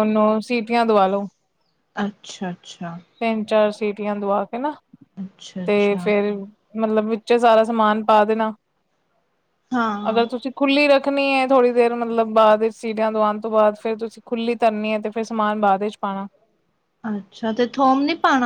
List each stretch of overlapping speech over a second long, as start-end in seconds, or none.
none